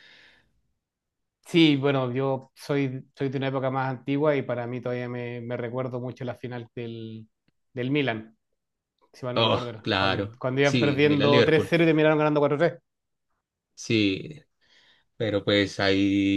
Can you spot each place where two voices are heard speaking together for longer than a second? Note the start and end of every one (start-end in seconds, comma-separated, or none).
9.3-11.7